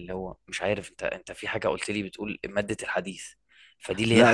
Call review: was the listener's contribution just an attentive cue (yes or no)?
yes